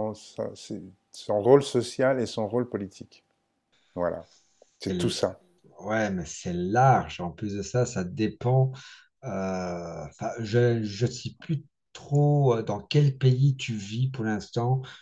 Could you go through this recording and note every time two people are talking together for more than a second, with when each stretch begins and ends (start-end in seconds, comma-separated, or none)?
none